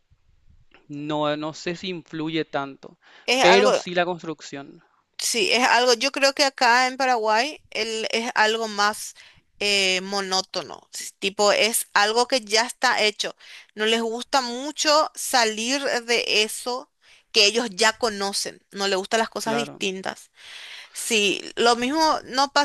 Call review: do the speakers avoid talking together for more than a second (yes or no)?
yes